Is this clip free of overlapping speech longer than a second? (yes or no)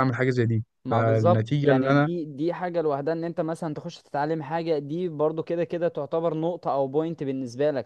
no